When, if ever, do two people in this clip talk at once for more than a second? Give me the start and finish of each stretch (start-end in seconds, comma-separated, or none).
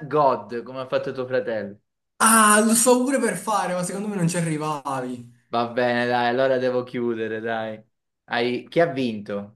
none